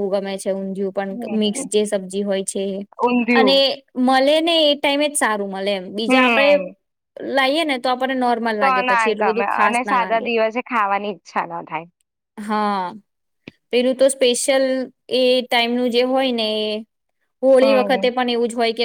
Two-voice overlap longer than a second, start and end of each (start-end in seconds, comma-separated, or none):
none